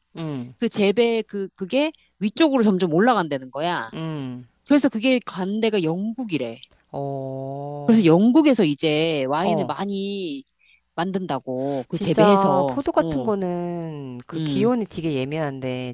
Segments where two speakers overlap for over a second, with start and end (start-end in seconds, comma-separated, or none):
11.9-13.3